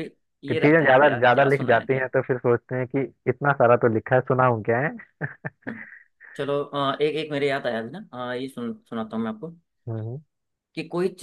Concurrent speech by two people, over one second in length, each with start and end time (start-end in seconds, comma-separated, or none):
0.5-2.1